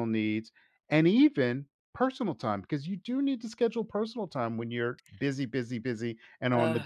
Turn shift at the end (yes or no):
yes